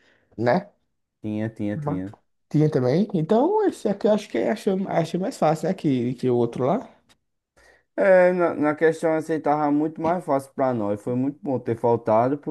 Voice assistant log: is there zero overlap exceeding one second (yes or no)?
yes